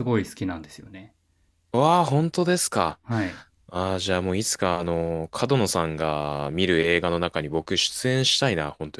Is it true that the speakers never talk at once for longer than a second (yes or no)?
yes